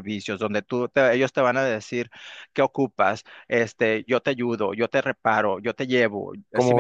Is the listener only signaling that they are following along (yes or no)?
no